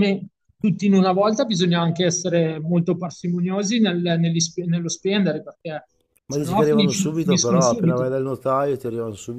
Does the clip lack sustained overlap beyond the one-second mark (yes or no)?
no